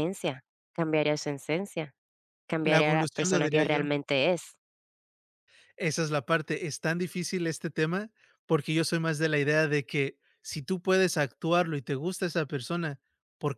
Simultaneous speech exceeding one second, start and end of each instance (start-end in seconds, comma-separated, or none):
2.6-3.9